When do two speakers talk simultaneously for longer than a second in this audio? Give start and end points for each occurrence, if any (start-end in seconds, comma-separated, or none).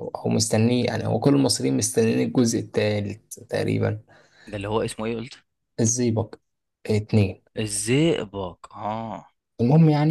none